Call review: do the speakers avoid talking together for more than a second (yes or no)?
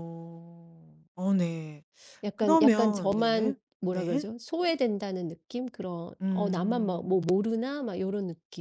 no